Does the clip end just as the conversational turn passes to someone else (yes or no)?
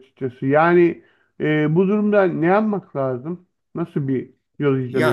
yes